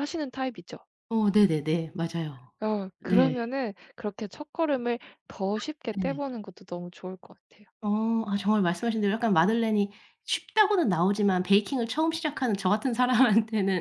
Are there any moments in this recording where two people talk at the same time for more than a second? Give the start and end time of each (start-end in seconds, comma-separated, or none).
none